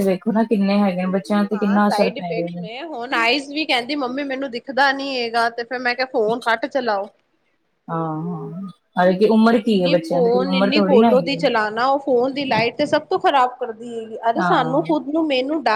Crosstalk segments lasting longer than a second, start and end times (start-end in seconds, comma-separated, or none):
9.7-11.5